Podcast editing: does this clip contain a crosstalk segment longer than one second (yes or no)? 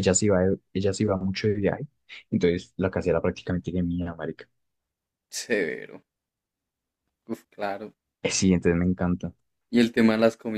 no